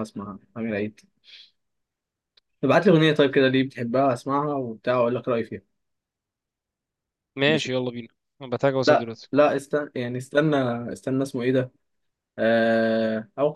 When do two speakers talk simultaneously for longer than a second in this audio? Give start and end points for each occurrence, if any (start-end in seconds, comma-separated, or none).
none